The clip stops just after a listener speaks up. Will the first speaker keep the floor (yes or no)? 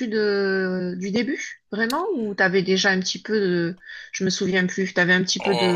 no